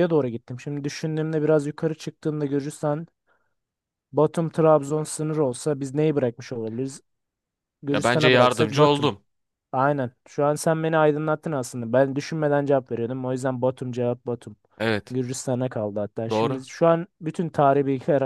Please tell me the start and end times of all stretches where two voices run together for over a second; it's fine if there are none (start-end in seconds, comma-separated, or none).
7.9-9.1